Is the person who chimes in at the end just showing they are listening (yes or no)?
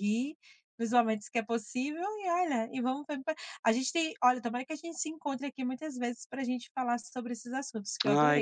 no